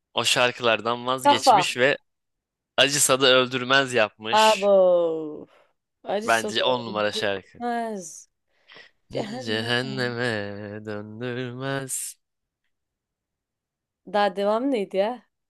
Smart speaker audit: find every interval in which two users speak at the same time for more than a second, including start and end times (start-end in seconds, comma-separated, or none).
6.2-7.6